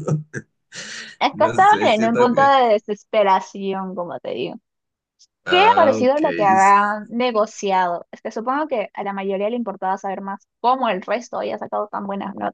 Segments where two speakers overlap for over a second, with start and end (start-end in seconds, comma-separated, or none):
1.3-2.5, 5.5-6.9